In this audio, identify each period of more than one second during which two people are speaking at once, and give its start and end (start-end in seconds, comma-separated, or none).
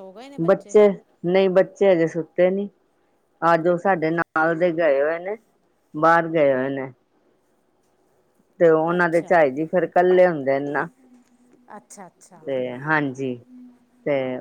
none